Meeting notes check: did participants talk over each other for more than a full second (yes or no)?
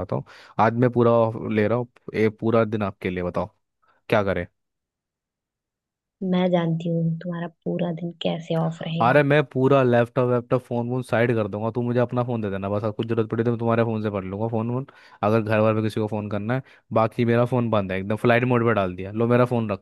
no